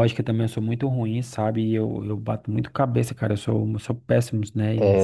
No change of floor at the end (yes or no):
no